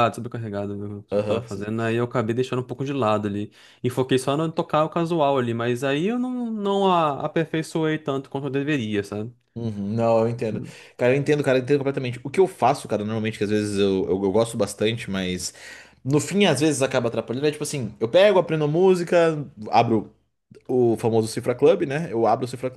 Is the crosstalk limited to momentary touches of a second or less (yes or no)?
yes